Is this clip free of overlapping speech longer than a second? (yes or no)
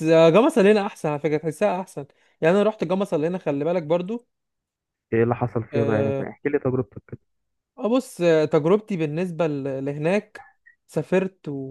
yes